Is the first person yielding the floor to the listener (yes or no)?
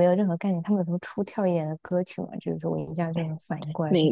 yes